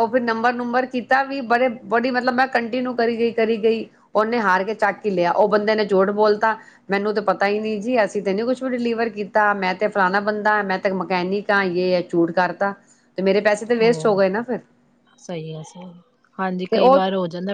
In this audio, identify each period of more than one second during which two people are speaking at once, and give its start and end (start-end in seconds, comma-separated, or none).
none